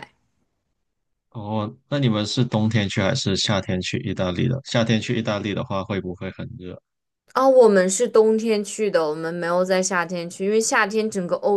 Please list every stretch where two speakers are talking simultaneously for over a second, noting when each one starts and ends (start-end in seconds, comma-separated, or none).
none